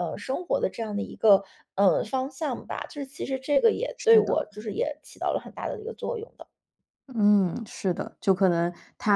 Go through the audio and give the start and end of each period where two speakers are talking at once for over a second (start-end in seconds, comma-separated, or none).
none